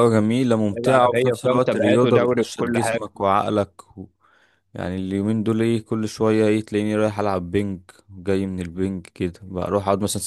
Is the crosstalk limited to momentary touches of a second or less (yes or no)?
no